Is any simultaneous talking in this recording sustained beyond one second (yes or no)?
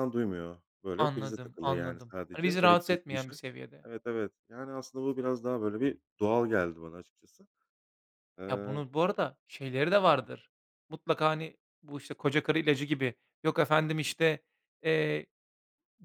yes